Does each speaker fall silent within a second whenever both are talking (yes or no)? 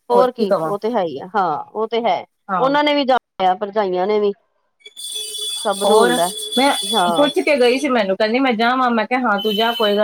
yes